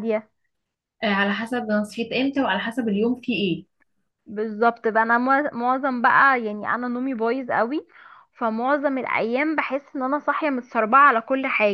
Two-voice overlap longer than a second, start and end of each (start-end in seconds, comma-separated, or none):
none